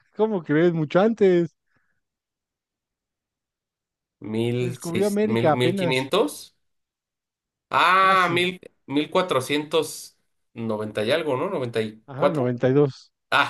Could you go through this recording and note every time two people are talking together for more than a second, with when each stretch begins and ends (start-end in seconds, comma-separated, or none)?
4.6-6.1